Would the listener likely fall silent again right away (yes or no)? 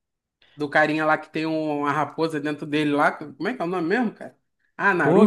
no